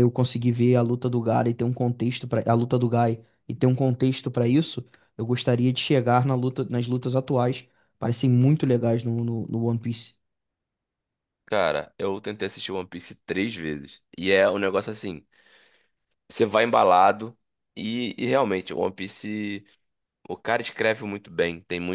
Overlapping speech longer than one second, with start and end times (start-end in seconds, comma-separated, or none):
none